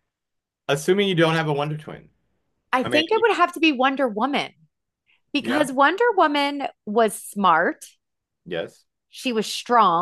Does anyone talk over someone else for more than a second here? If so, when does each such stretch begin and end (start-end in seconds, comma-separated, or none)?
none